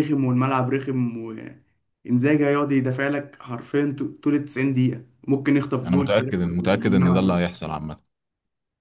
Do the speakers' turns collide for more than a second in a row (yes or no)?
yes